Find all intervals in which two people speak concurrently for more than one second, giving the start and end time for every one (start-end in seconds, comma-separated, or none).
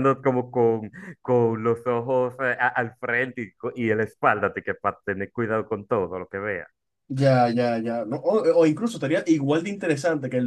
none